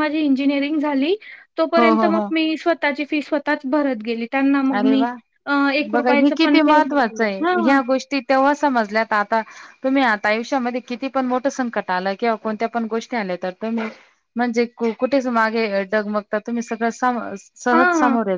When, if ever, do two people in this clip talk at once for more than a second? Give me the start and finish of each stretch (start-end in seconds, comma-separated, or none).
5.9-7.8